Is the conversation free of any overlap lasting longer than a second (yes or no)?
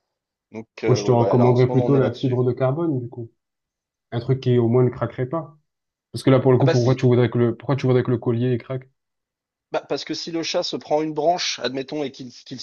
no